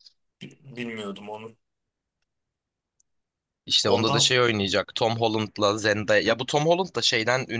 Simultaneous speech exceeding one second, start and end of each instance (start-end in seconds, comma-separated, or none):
none